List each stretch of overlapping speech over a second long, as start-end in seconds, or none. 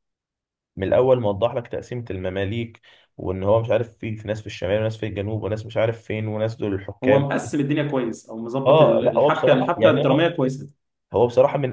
8.7-10.3